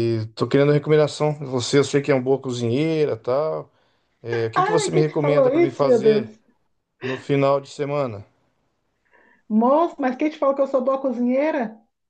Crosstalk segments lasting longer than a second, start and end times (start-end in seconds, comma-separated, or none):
4.5-6.3